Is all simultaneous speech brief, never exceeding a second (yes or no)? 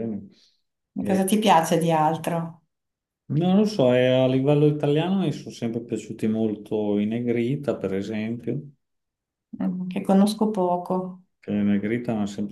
yes